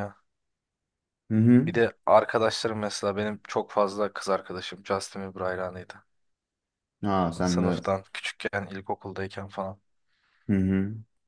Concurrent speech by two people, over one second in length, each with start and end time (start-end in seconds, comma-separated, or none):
none